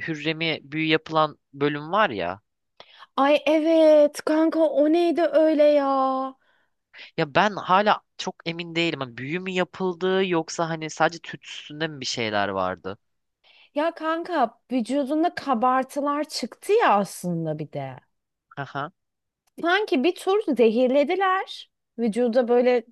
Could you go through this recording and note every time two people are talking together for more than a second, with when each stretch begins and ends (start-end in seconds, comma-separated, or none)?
none